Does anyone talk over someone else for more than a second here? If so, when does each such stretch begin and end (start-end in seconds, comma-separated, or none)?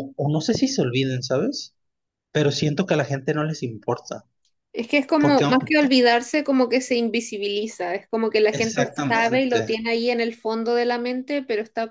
8.5-9.8